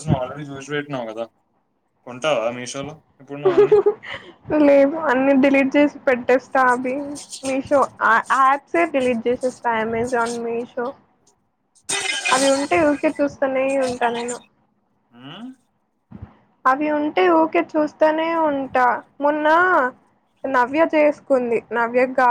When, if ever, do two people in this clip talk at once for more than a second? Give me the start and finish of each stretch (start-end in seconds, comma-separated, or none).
none